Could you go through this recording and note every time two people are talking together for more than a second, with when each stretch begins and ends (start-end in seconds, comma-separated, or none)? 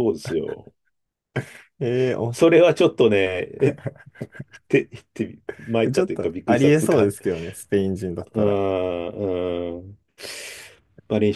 5.8-7.1